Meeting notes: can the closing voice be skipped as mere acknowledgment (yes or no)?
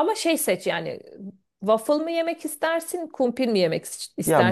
no